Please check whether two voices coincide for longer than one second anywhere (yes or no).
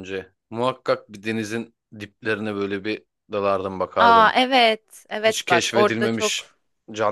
yes